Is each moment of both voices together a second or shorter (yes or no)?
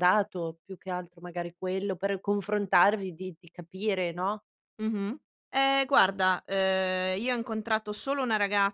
yes